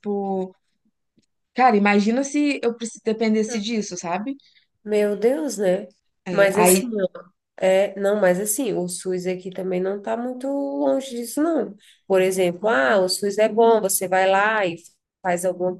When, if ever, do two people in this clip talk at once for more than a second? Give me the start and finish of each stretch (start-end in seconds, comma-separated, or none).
none